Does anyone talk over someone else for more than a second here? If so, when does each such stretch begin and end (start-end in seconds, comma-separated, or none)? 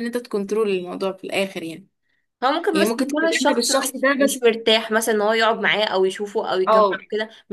2.7-4.4